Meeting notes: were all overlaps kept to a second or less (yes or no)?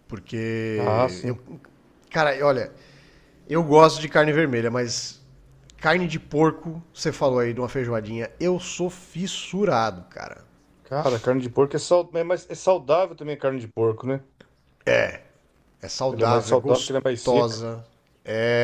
no